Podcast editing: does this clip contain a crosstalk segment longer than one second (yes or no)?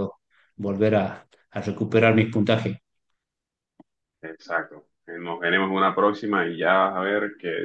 no